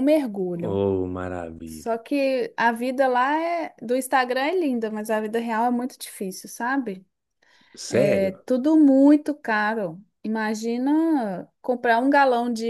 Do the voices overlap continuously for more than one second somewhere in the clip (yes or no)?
no